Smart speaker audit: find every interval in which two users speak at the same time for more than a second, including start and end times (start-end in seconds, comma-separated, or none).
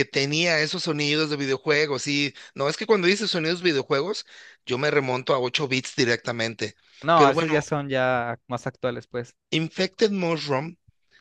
none